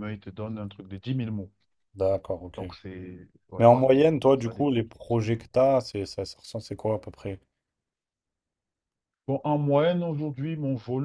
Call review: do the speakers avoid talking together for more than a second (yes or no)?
no